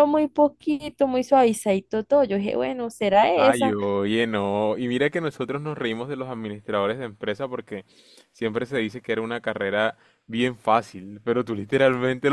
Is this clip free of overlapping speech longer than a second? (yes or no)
yes